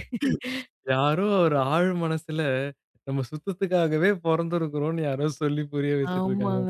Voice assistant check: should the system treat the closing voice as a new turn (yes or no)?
yes